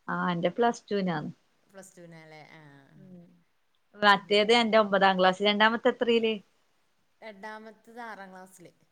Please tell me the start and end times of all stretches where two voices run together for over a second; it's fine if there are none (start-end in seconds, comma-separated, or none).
none